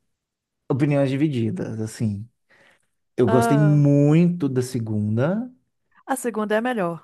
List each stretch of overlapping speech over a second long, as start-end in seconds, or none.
none